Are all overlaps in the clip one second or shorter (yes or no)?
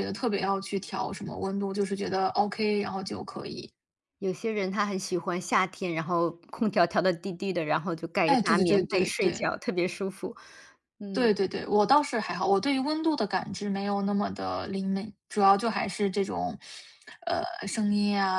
no